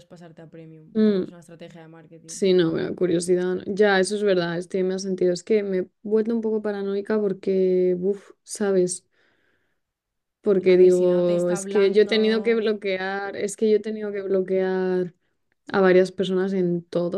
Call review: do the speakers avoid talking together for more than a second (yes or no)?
no